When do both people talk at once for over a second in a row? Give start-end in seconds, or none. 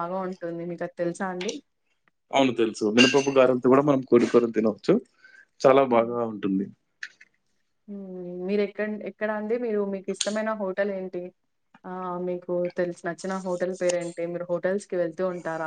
none